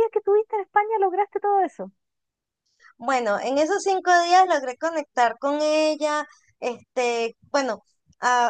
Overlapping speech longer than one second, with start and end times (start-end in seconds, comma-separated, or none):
none